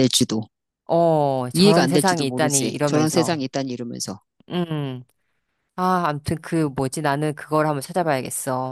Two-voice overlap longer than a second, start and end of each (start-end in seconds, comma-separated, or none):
1.5-3.4